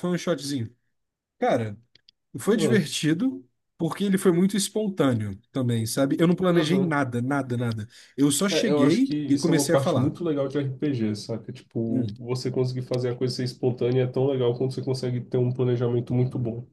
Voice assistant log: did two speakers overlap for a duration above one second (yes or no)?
yes